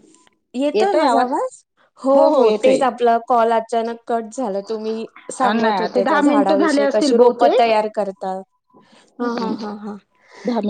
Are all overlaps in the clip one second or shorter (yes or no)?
no